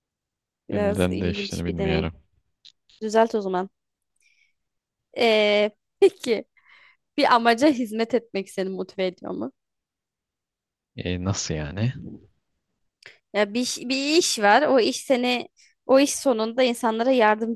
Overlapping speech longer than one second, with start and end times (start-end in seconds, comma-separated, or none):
0.7-2.1